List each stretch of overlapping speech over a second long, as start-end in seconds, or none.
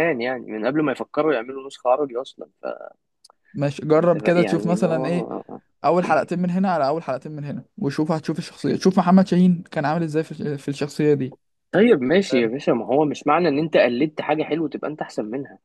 3.9-5.3